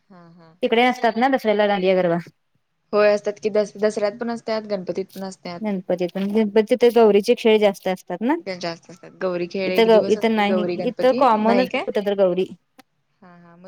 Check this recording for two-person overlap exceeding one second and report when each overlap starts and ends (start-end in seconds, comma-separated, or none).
9.7-11.8